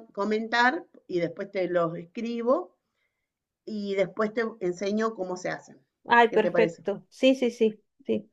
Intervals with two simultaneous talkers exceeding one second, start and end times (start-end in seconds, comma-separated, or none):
none